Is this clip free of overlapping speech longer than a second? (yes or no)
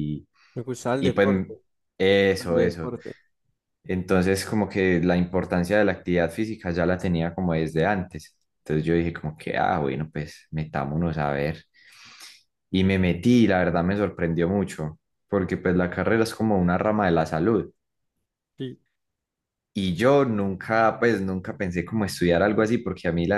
yes